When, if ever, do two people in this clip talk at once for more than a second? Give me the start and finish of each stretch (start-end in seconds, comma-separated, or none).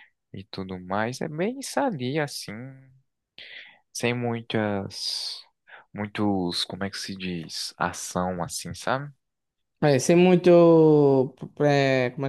none